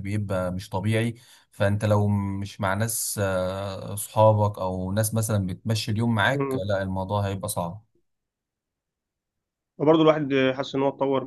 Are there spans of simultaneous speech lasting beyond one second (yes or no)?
no